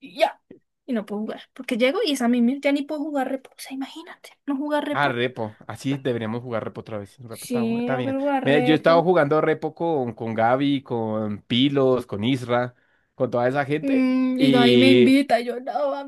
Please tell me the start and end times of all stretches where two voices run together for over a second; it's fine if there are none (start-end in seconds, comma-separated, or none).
7.3-9.1, 13.8-15.2